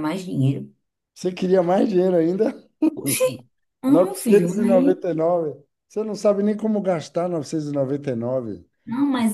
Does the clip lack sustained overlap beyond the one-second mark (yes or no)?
no